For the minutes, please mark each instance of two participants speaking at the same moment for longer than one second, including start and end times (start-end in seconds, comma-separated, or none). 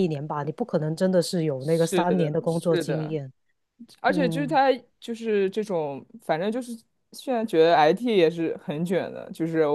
1.6-3.1